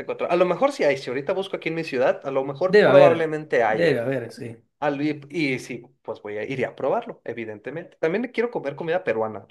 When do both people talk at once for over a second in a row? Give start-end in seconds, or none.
2.7-4.0